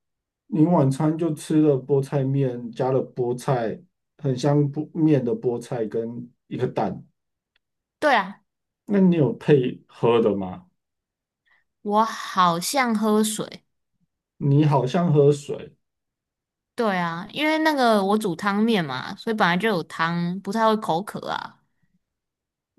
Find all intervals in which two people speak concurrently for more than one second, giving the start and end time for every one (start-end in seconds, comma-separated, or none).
none